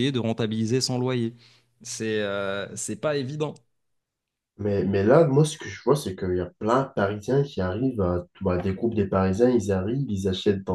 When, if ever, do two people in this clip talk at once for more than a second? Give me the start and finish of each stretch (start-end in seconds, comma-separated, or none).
none